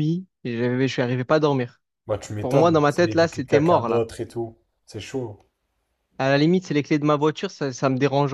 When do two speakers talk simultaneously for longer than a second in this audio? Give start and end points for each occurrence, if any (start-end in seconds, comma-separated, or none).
2.4-4.0